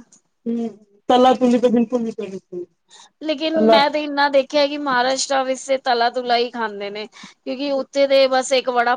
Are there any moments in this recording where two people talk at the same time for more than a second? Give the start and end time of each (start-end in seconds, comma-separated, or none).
none